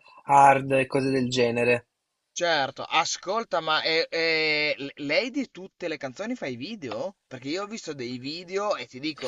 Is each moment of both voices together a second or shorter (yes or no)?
yes